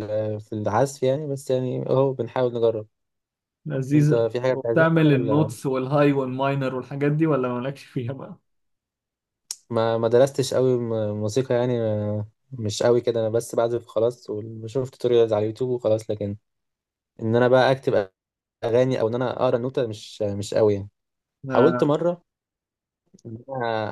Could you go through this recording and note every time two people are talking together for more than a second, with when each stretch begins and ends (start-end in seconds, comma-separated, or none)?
3.9-5.5